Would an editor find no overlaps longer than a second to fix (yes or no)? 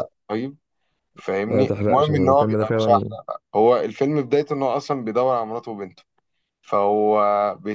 no